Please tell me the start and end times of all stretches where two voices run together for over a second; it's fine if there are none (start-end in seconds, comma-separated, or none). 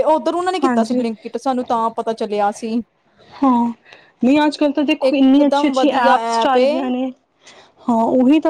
5.1-6.7